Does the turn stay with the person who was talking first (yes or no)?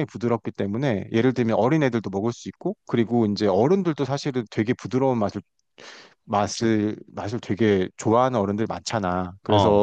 yes